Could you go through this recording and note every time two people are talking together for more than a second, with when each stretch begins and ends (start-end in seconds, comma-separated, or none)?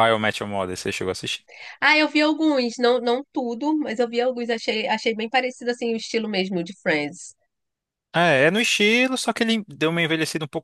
none